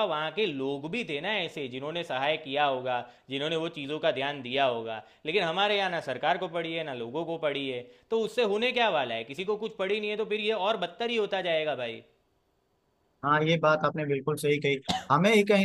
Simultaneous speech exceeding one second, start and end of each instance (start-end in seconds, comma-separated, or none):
none